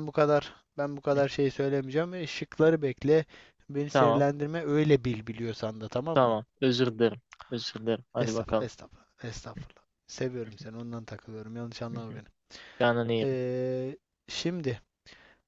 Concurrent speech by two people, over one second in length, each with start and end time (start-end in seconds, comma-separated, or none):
none